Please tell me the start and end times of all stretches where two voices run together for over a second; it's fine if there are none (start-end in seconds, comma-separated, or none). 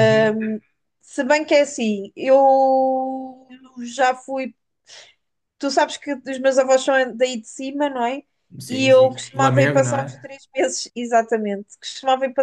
8.7-10.2